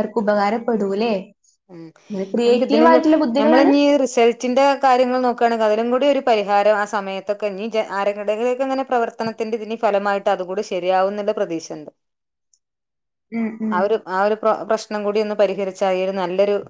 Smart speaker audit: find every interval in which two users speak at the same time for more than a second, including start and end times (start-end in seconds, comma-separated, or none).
none